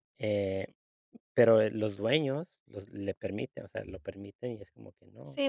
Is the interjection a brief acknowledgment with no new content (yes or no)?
no